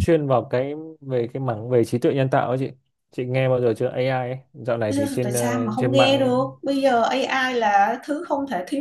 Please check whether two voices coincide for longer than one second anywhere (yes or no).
yes